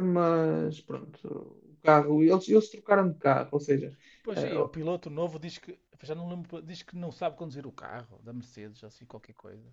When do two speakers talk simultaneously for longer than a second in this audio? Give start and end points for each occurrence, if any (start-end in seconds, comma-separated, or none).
none